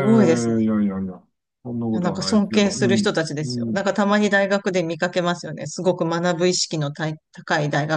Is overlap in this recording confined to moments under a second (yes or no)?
no